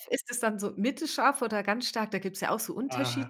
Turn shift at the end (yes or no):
yes